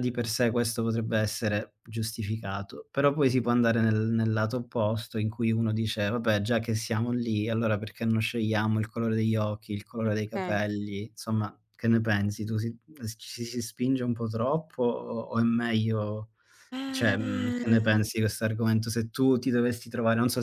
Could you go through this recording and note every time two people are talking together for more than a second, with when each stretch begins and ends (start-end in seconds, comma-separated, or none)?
16.9-18.1